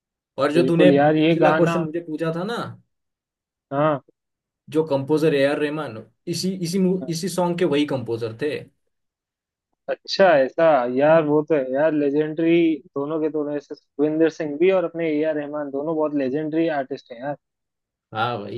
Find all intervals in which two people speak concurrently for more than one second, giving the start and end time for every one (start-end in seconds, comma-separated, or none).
0.6-1.8